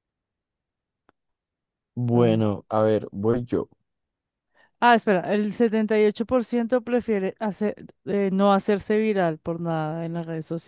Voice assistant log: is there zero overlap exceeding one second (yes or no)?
yes